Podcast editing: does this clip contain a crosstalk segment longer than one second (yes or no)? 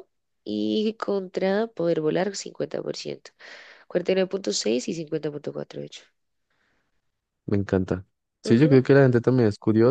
no